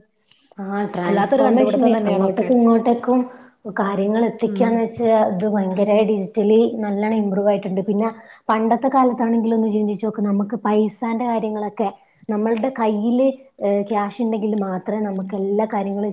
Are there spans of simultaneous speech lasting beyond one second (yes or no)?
yes